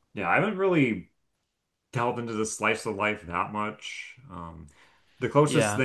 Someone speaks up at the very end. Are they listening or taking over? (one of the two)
listening